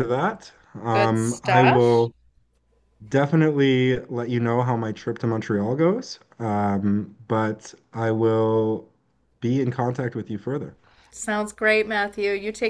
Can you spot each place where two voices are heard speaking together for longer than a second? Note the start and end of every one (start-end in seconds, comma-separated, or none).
0.9-2.1